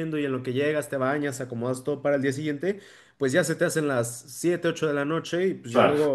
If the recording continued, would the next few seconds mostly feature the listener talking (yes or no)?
no